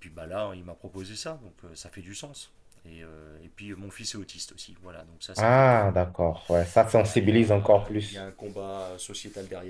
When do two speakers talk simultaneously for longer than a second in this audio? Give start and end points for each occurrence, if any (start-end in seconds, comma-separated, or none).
6.9-8.3